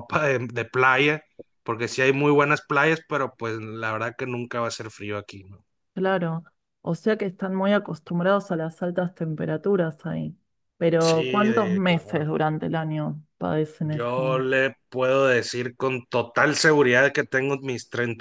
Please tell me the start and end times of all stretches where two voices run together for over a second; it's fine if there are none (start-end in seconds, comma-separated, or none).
11.0-12.3